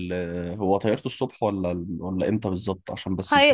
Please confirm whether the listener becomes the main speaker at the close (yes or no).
yes